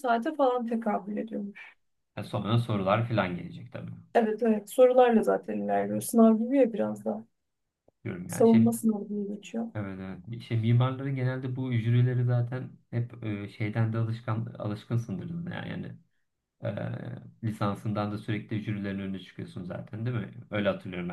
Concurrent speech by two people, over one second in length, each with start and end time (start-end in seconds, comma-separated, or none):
none